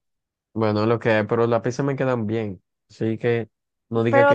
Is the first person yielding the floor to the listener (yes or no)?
yes